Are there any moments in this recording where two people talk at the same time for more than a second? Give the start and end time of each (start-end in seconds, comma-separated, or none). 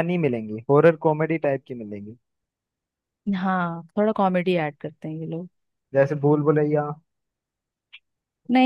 none